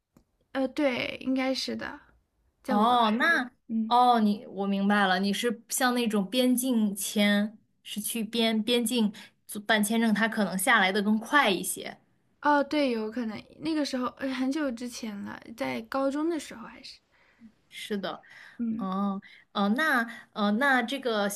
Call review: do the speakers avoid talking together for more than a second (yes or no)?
yes